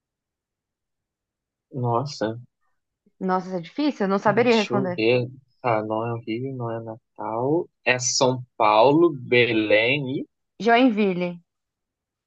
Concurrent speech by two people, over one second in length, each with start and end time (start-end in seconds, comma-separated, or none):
none